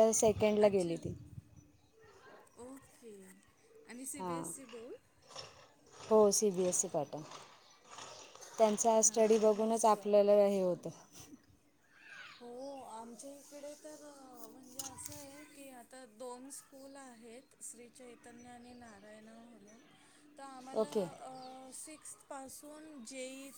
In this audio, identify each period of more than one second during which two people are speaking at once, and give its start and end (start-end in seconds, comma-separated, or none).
8.9-10.1